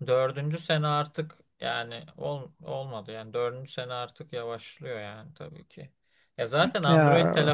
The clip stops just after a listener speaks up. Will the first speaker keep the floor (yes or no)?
yes